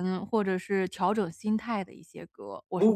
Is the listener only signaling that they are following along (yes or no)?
no